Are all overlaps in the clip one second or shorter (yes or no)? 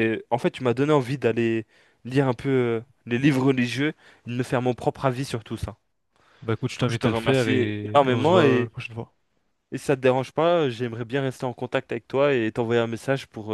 no